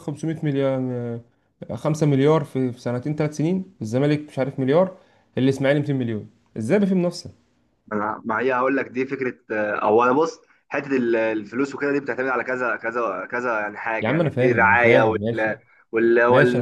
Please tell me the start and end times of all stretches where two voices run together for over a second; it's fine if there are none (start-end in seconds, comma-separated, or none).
14.0-15.5